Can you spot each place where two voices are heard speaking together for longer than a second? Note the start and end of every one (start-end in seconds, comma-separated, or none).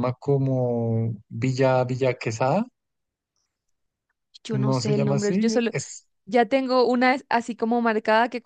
4.5-5.7